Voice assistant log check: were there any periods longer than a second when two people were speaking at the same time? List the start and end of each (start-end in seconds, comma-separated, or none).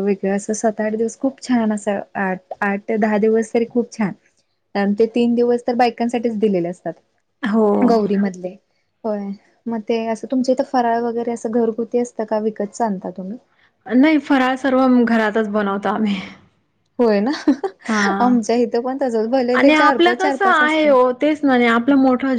19.6-20.9